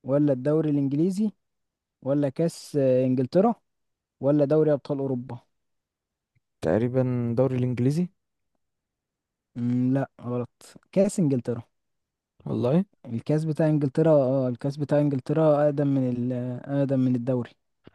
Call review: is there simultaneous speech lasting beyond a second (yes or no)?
no